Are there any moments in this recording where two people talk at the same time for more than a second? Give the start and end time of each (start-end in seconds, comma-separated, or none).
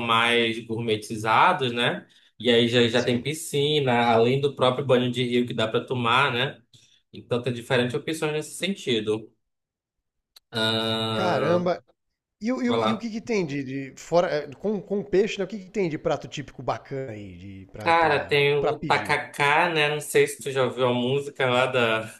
17.8-19.2